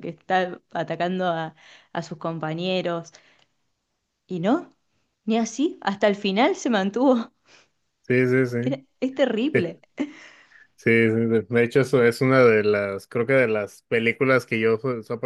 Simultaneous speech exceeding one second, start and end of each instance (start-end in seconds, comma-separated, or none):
none